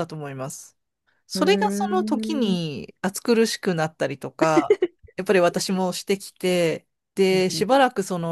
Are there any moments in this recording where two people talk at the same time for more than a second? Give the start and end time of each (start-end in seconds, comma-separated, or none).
1.3-2.6